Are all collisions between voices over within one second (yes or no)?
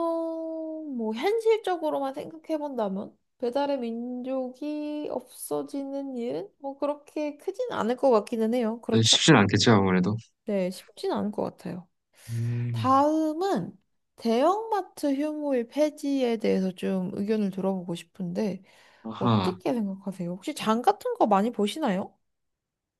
yes